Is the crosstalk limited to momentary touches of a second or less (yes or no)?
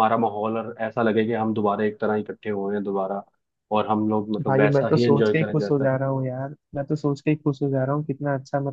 no